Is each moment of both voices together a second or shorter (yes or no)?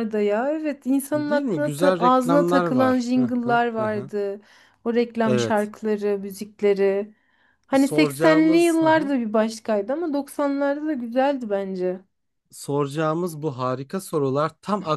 no